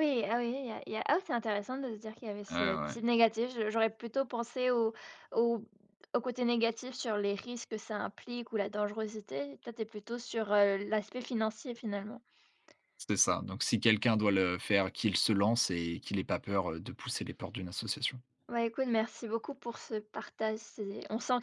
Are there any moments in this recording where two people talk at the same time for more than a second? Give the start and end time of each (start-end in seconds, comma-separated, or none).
none